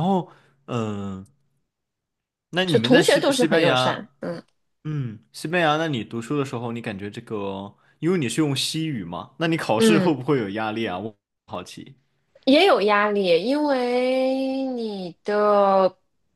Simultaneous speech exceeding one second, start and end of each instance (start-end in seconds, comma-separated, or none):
2.7-4.1